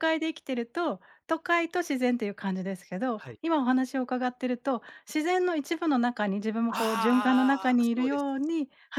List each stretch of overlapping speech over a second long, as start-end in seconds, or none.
6.7-8.2